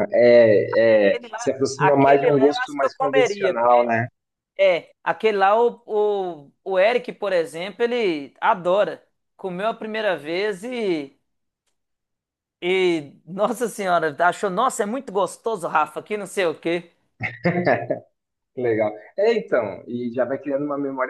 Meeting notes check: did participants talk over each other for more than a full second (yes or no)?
yes